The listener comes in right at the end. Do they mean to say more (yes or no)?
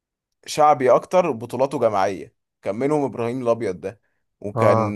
no